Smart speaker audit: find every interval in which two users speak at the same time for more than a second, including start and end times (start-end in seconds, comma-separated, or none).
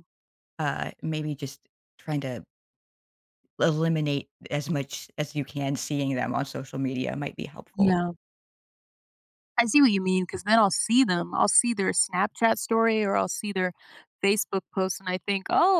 none